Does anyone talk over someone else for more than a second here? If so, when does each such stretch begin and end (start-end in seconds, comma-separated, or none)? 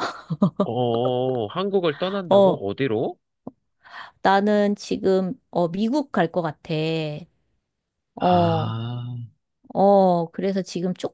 none